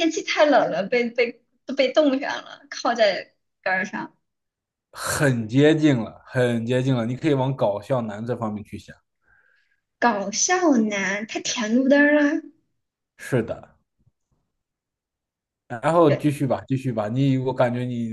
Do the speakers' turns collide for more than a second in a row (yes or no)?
no